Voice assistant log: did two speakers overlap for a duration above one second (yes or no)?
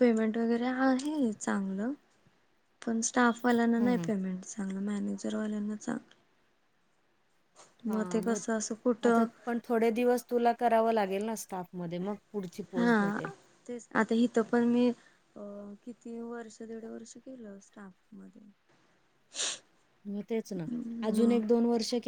no